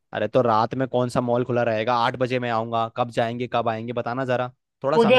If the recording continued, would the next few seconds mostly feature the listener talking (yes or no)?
yes